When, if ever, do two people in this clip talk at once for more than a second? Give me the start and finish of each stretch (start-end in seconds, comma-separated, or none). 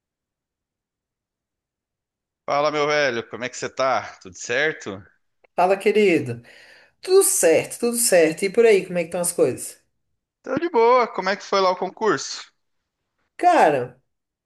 none